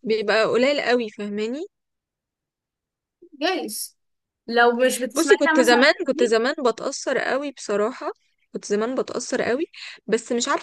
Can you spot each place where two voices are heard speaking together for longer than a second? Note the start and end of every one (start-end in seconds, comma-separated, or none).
5.1-6.4